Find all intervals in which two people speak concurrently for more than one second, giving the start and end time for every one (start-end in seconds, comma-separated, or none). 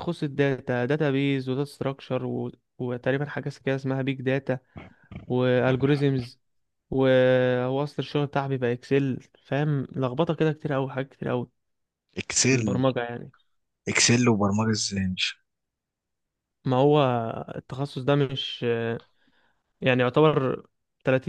none